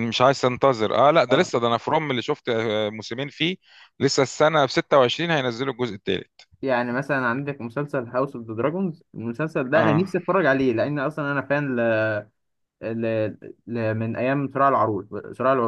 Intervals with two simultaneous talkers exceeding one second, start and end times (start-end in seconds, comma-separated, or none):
none